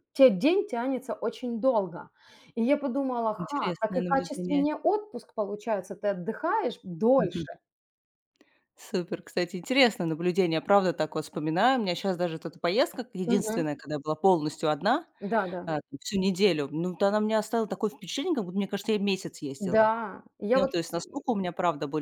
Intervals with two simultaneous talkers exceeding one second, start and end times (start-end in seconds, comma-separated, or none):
3.4-4.7